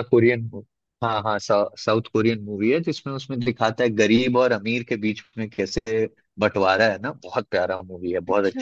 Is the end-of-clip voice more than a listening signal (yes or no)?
no